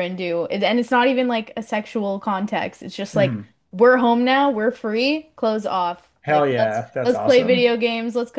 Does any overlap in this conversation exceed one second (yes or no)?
yes